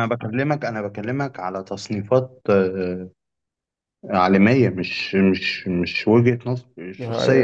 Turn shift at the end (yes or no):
yes